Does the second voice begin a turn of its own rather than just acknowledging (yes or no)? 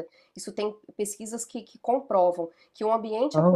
no